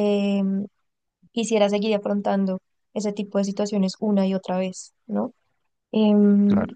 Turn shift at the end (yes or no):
no